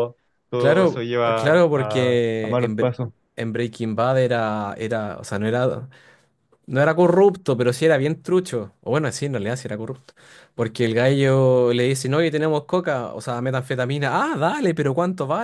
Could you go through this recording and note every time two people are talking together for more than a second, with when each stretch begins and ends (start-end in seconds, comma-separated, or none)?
0.6-2.9